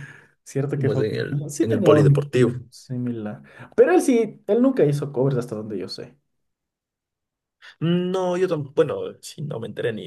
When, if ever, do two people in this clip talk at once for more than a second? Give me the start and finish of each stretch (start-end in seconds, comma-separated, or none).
0.8-2.5